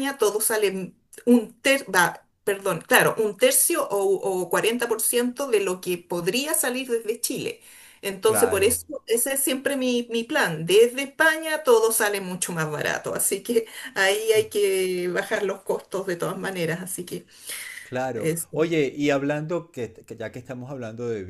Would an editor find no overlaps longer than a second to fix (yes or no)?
yes